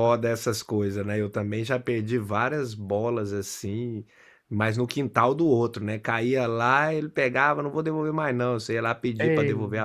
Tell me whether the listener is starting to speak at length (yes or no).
no